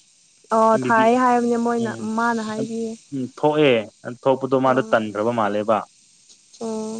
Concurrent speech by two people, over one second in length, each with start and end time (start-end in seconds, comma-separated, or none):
0.7-2.6